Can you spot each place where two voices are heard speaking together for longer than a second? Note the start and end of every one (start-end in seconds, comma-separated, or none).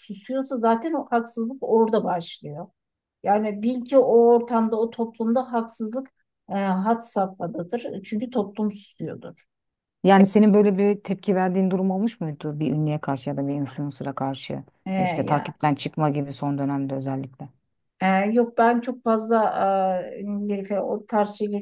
none